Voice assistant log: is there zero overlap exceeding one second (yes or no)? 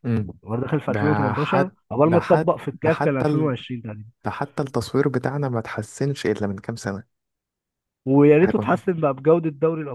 no